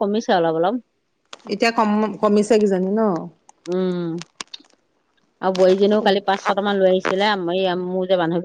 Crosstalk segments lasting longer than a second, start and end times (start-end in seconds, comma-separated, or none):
none